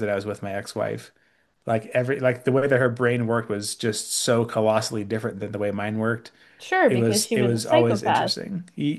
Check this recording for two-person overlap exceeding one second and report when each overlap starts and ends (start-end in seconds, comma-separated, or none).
6.9-8.3